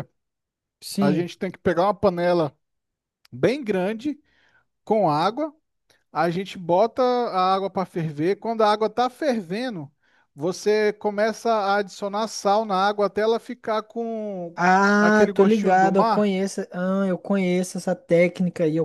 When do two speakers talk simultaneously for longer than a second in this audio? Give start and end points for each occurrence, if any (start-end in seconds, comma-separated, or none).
15.0-16.3